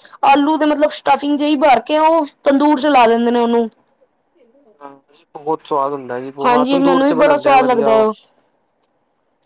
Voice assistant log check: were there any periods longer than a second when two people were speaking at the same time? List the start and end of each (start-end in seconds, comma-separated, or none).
6.5-8.1